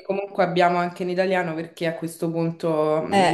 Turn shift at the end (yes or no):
no